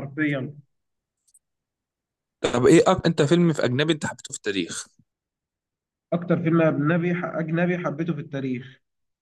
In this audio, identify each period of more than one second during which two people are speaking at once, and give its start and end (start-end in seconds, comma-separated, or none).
none